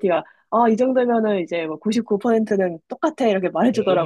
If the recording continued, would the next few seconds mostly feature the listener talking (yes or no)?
yes